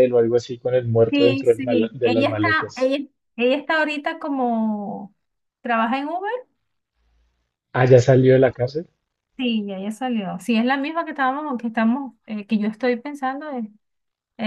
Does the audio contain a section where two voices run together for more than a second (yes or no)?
yes